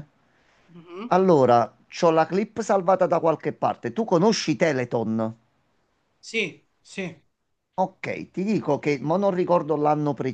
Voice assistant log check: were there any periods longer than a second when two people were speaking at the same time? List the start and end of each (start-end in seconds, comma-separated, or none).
none